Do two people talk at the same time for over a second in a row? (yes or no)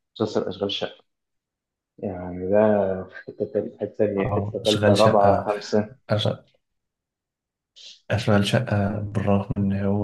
yes